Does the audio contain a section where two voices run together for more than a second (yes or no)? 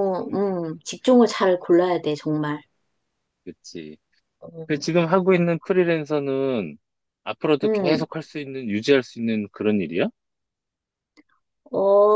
no